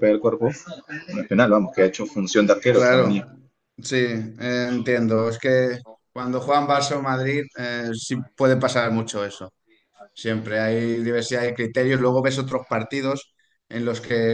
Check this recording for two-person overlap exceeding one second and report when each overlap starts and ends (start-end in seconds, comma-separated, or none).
none